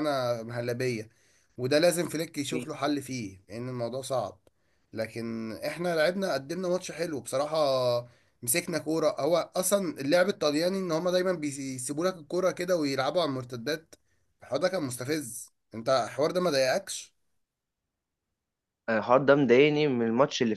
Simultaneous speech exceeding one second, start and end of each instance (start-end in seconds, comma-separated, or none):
none